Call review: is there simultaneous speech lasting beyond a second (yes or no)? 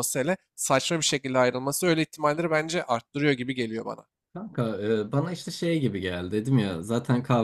no